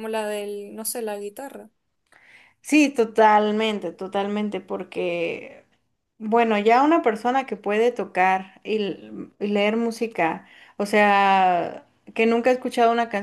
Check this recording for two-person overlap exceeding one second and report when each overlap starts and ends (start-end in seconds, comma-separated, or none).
none